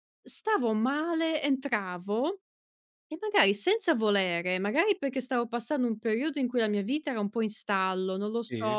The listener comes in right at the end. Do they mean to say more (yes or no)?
no